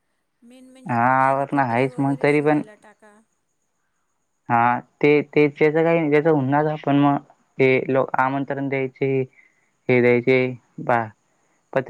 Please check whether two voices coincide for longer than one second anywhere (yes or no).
yes